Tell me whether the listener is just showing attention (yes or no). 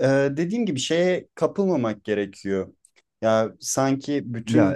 yes